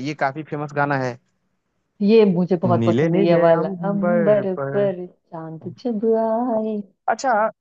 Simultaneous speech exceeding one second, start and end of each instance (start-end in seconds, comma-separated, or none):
2.8-4.7